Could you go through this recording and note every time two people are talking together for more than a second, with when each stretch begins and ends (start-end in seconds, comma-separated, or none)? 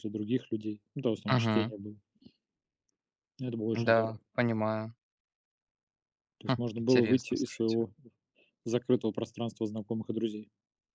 6.4-7.8